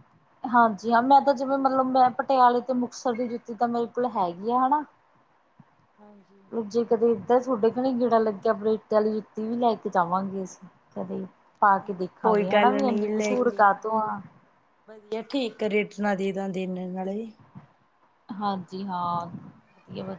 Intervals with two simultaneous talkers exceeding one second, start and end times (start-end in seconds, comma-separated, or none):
12.2-14.2